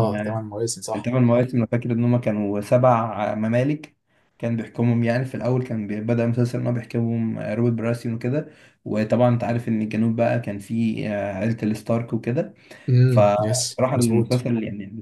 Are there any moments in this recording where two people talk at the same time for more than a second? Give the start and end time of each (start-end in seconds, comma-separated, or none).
13.1-14.5